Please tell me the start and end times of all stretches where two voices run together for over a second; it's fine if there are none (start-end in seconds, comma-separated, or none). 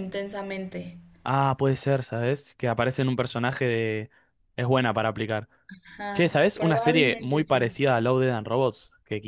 6.1-7.7